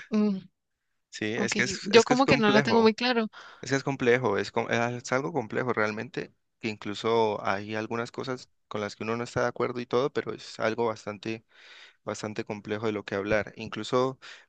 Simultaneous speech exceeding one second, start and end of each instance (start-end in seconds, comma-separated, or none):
1.4-2.9